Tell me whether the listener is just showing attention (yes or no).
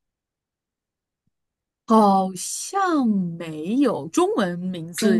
no